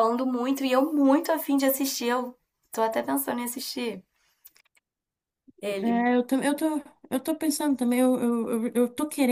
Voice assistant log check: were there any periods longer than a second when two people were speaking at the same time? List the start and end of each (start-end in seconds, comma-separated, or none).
none